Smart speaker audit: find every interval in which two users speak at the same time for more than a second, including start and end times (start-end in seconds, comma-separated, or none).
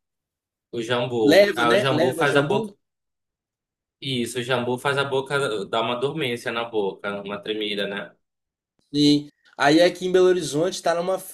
1.2-2.7